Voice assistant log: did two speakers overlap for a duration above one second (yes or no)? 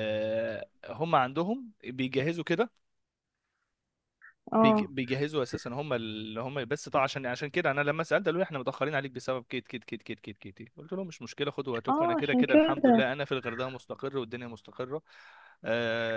yes